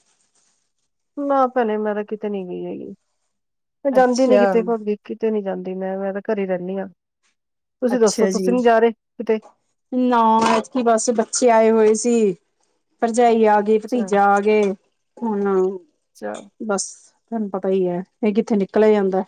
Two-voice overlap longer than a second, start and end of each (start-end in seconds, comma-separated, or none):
none